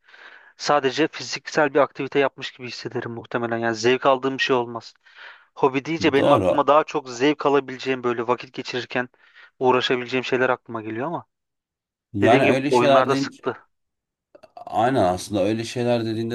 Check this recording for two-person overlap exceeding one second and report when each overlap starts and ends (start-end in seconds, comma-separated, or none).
12.2-13.6